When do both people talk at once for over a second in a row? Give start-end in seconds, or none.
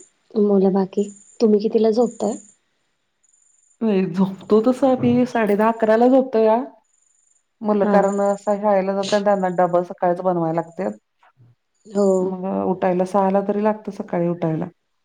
none